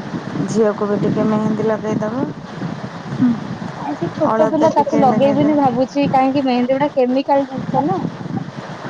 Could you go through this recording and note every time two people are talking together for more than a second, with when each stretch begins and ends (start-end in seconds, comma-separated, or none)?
4.3-5.8